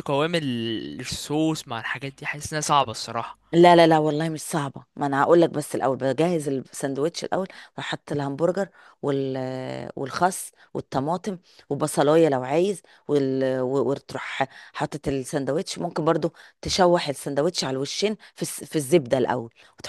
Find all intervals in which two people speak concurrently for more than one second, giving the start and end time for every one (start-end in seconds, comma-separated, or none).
none